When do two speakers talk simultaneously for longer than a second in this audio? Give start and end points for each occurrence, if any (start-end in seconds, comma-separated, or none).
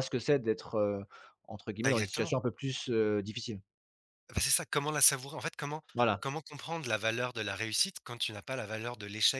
none